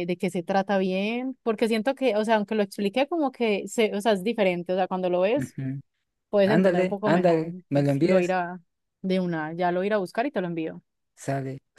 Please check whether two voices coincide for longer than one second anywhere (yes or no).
yes